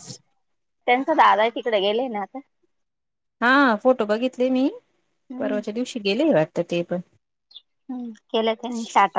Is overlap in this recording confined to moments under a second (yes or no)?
yes